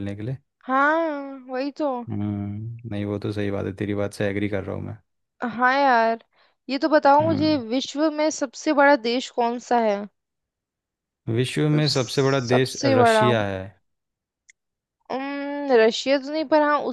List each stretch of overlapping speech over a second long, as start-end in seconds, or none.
11.7-13.3